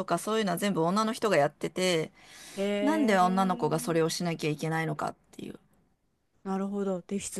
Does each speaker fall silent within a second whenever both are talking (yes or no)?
no